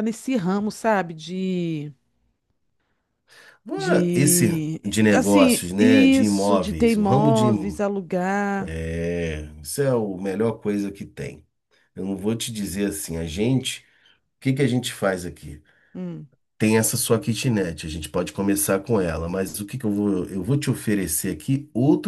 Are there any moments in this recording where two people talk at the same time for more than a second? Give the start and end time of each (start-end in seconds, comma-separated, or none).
3.8-7.8